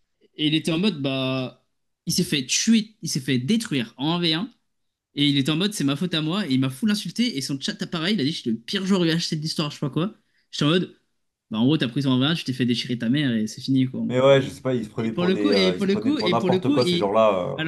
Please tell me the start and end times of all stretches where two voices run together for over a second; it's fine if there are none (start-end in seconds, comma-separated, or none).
15.0-17.1